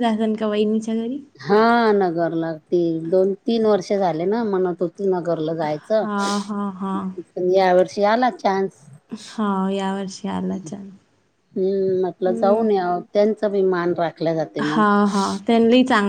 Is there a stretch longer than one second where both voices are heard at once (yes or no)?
no